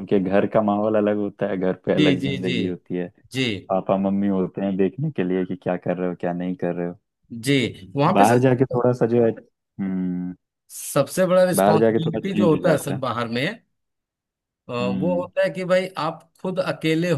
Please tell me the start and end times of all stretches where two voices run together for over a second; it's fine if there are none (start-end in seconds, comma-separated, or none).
11.6-13.0